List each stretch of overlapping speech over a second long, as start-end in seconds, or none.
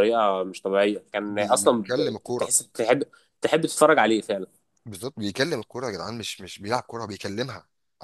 1.3-2.5